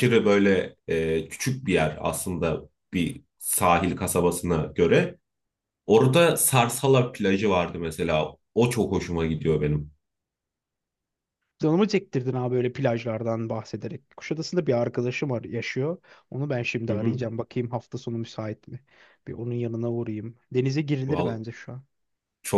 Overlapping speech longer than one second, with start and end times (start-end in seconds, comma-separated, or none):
none